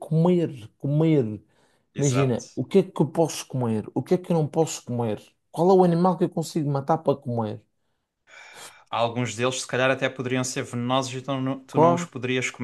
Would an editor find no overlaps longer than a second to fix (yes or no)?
yes